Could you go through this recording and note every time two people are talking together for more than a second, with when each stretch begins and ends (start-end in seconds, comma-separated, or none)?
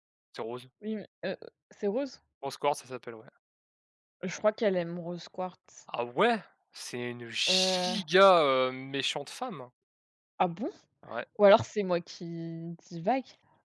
none